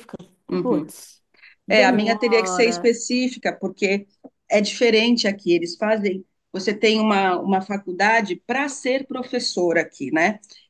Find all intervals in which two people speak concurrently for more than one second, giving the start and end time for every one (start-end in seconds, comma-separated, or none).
1.7-2.9